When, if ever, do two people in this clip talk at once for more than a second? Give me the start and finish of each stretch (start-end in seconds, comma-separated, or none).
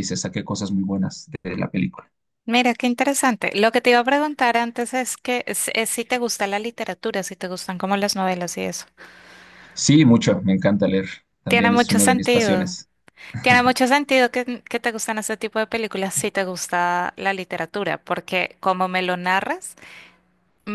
11.5-12.8